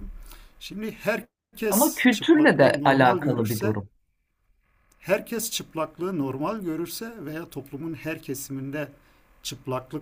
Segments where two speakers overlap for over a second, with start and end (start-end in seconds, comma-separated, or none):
1.7-3.8